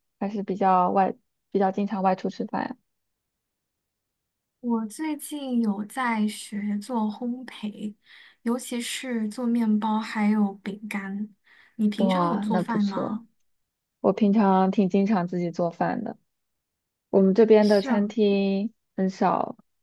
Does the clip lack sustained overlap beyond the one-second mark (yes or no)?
no